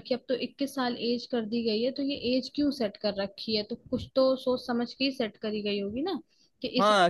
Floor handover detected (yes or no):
yes